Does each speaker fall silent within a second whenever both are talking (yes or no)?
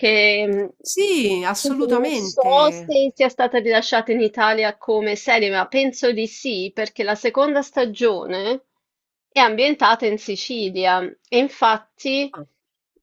no